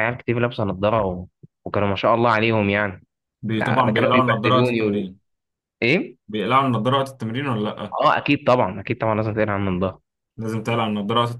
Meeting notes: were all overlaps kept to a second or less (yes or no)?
no